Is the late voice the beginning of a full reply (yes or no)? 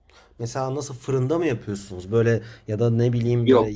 no